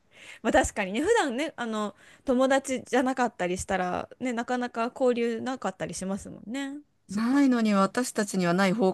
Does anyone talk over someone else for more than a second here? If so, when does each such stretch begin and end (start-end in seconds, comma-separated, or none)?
none